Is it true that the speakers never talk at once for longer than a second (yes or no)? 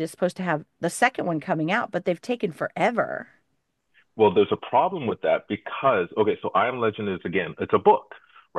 yes